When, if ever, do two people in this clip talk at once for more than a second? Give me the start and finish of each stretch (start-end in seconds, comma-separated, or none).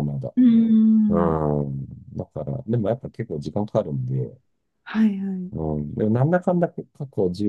none